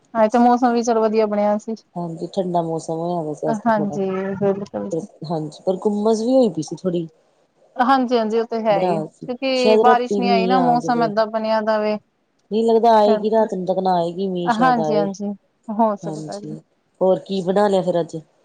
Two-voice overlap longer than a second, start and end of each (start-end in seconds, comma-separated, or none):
9.5-11.1